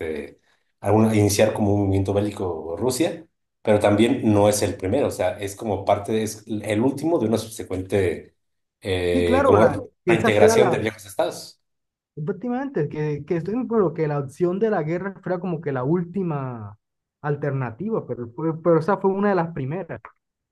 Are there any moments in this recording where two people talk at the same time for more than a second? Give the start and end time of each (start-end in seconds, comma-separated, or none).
9.1-10.8